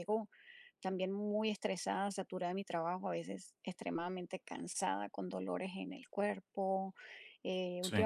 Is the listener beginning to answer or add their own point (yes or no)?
no